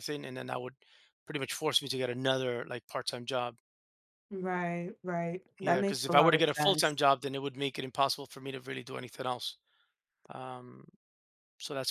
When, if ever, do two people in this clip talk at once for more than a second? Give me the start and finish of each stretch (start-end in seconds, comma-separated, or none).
5.6-7.0